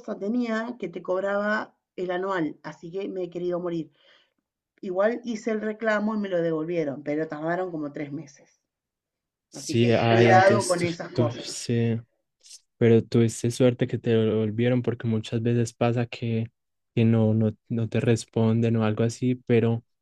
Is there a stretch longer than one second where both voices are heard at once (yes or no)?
yes